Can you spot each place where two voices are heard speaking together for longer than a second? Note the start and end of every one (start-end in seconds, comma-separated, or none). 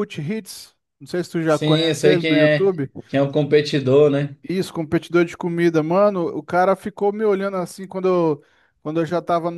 1.4-2.7